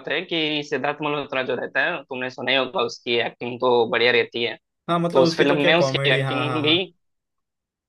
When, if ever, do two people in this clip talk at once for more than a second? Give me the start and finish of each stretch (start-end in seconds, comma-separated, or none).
5.1-6.8